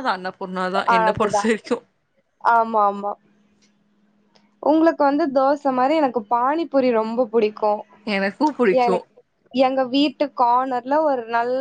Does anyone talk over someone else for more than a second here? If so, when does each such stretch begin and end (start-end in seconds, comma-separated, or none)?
none